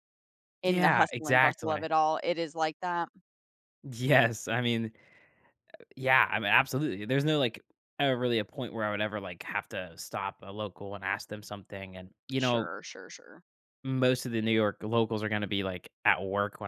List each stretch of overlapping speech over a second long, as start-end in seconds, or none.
0.6-1.8